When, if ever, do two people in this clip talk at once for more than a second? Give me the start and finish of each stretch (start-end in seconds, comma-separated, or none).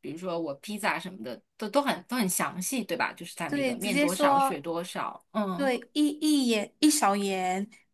3.5-4.7